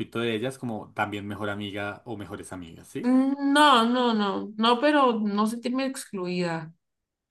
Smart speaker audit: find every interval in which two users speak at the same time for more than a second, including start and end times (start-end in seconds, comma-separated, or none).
none